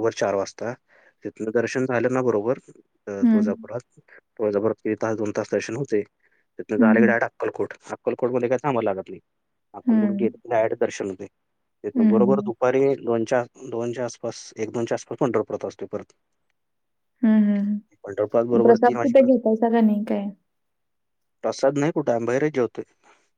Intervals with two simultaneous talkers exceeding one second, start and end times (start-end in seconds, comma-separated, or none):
18.0-19.3